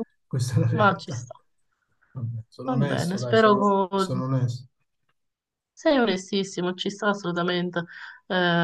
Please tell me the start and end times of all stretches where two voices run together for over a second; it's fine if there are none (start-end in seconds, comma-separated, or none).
2.7-4.1